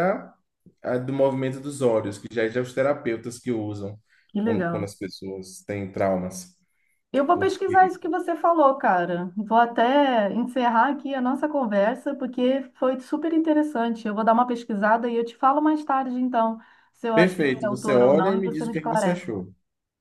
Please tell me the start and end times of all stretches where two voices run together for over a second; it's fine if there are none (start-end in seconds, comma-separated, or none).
17.1-19.3